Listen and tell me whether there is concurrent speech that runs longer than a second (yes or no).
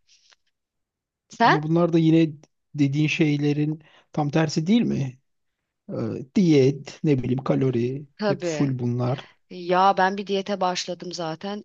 no